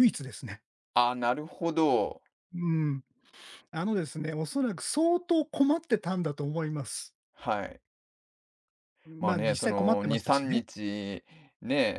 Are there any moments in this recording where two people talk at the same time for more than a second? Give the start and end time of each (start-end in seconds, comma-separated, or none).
9.2-10.6